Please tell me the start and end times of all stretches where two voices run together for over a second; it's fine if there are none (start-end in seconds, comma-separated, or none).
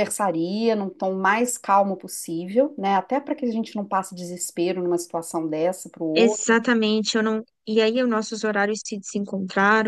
none